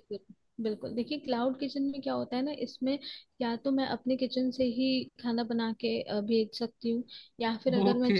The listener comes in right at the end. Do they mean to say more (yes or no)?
no